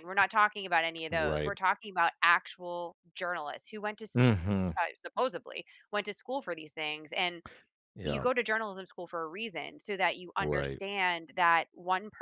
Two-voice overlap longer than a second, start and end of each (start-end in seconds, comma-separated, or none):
none